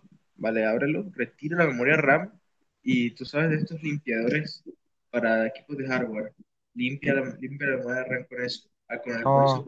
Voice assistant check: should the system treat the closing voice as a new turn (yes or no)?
no